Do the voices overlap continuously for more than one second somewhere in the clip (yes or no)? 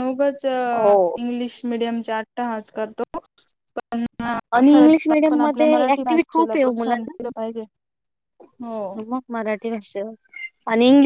yes